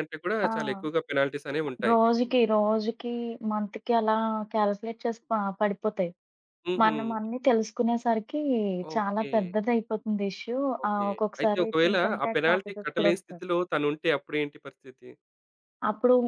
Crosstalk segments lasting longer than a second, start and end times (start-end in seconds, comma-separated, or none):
10.8-13.4